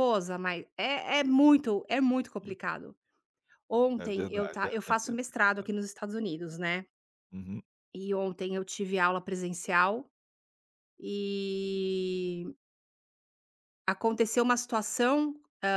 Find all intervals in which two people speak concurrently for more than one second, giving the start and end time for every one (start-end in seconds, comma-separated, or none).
4.0-5.7